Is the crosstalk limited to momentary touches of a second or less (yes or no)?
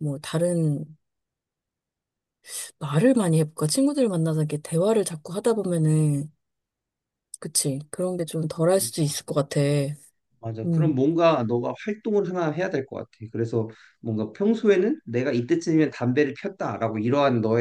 yes